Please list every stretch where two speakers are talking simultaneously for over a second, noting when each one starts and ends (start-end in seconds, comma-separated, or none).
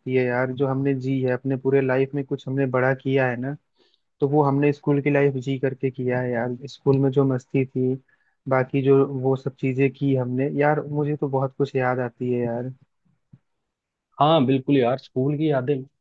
none